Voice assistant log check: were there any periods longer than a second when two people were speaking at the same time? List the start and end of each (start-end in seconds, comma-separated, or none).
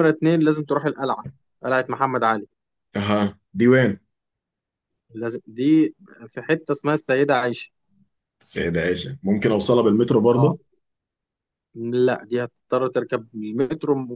none